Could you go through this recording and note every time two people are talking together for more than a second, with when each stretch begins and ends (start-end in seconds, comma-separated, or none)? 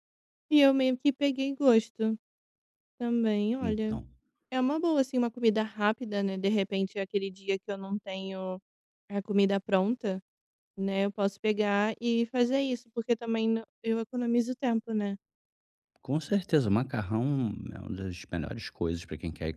none